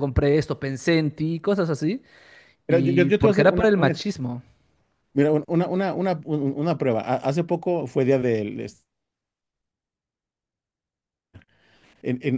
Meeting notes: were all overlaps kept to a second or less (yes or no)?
no